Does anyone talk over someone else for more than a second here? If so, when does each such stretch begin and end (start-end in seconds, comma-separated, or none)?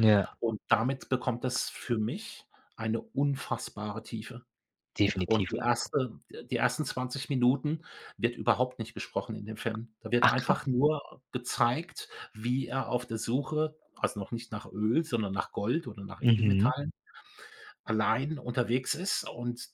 none